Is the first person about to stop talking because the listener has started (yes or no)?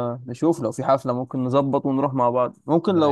no